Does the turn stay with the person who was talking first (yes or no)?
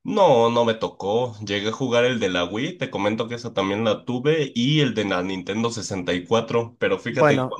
yes